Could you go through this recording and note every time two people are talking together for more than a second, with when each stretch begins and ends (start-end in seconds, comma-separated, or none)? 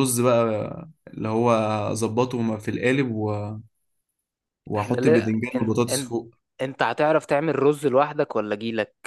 4.8-6.2